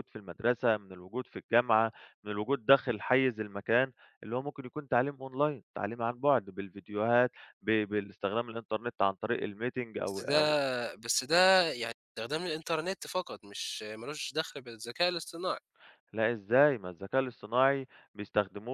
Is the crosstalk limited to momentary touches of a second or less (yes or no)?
yes